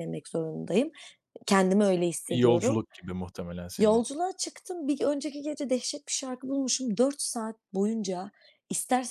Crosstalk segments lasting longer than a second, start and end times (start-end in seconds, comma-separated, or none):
none